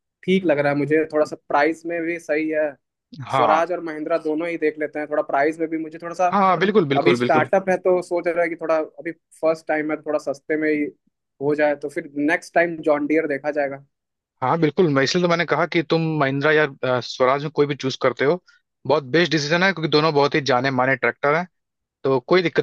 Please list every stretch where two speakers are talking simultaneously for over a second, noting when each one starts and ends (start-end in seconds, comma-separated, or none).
none